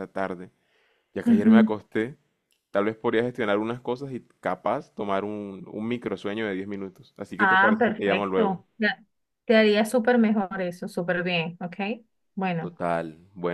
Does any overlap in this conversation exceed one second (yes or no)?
yes